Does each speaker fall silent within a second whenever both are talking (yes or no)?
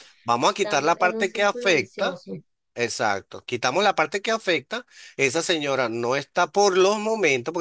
no